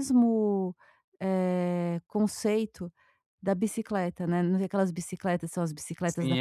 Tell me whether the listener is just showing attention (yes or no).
no